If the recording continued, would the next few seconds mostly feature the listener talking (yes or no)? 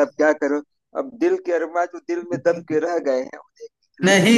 yes